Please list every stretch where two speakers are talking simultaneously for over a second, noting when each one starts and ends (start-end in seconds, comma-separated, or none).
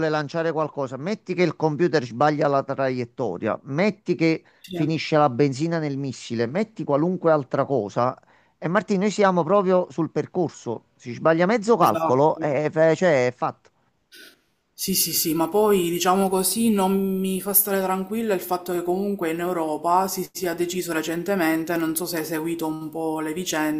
none